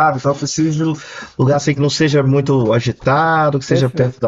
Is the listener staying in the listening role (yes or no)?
yes